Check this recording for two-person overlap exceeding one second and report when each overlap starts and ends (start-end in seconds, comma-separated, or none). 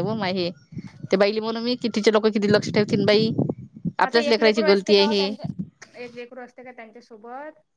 4.0-5.3